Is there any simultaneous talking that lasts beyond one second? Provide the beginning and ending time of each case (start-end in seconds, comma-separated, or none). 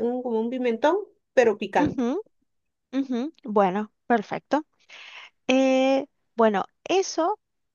none